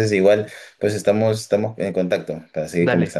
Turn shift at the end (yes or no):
yes